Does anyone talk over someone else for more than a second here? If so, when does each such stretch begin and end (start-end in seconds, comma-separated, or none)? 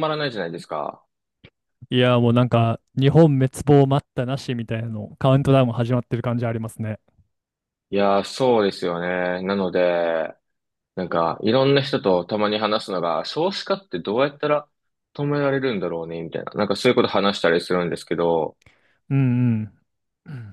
none